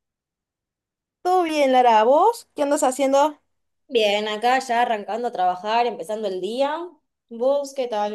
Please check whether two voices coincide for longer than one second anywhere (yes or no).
no